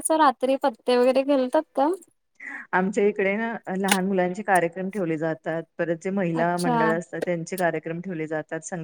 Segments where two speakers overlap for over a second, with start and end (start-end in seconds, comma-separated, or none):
none